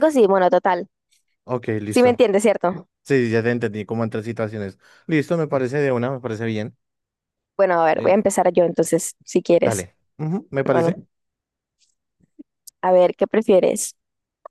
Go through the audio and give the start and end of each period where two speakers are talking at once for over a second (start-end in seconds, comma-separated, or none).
none